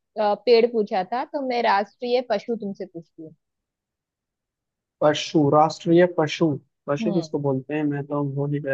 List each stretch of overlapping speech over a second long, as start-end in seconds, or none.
none